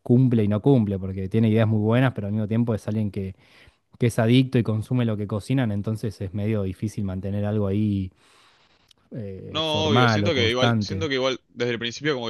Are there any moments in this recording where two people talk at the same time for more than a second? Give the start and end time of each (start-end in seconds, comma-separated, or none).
9.5-11.1